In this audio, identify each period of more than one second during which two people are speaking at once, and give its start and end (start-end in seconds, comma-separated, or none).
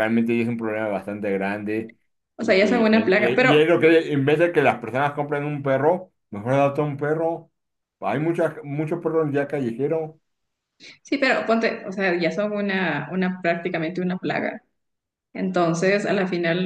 2.4-3.6